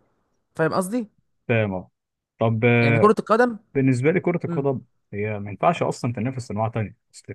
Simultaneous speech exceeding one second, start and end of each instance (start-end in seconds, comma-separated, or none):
none